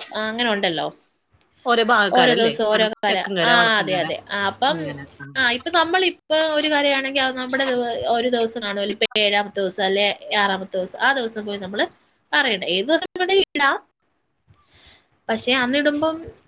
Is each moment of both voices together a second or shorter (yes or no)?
yes